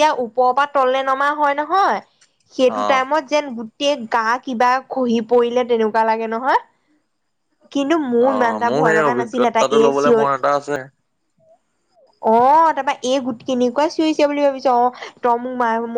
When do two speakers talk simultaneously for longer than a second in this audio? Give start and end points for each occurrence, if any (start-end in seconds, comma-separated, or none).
8.3-10.2